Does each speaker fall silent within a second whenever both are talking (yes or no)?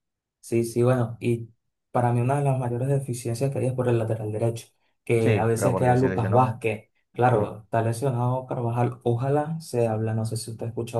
no